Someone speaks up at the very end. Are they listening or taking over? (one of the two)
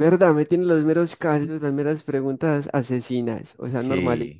taking over